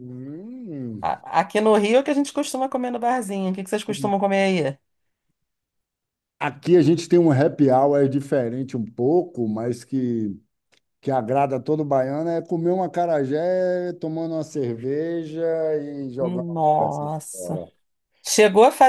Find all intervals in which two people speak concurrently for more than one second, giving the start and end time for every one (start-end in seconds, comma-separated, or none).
16.2-17.6